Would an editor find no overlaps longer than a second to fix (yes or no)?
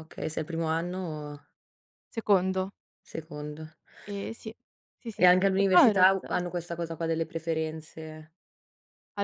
no